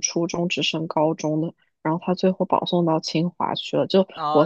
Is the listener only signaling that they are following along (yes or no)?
no